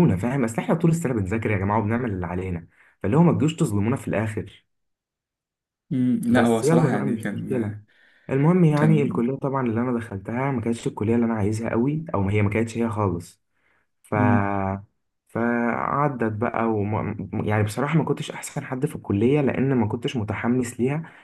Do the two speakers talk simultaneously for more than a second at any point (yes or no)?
yes